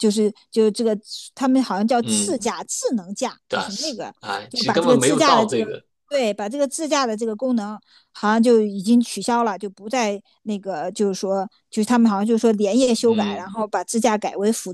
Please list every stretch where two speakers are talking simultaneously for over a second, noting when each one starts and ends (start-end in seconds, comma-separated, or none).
3.5-5.7